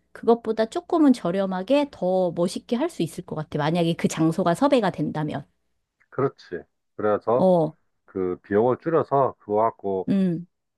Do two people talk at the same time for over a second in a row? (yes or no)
no